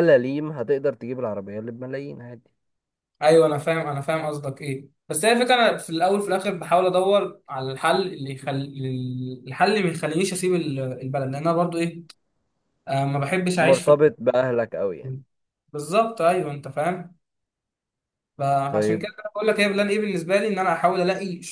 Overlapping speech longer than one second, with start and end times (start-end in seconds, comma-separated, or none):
none